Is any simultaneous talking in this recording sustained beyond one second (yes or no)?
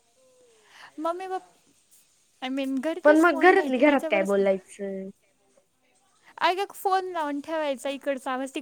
yes